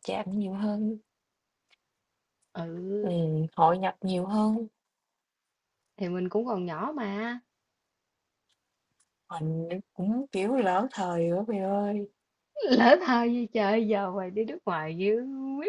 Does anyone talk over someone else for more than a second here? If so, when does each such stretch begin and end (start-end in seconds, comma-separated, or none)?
none